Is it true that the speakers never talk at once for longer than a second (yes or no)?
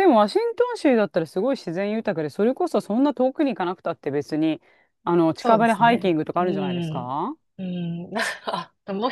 no